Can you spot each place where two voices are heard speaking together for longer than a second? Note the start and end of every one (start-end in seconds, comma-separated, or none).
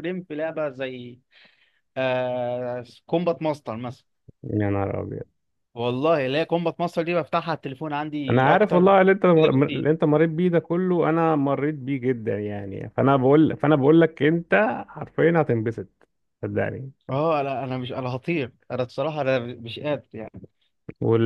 8.3-9.9